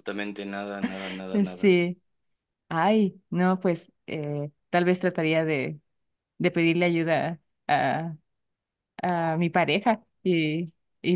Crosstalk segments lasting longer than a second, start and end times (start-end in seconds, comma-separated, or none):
none